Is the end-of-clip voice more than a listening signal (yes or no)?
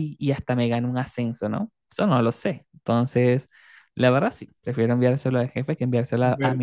no